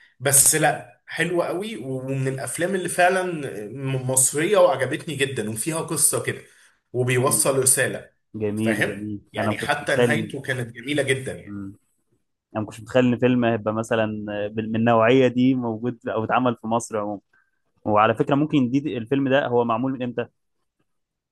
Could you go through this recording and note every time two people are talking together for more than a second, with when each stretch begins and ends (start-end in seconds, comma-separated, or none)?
8.6-10.3